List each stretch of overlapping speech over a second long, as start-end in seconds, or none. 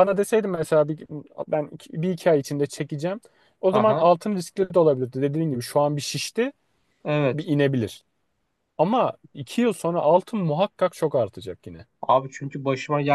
none